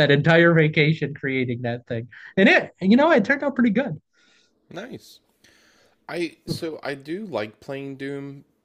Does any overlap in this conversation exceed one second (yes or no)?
no